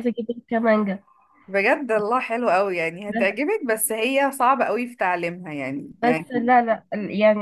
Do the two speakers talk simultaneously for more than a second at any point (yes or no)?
no